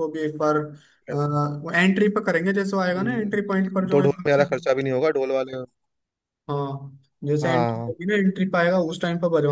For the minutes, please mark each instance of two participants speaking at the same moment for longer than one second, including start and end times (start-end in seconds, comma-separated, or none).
2.9-4.4